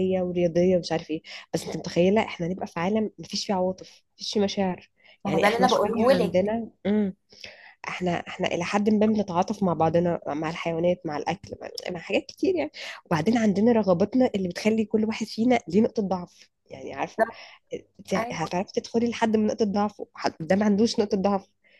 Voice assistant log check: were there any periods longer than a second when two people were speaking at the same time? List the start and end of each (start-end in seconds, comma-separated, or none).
5.3-6.5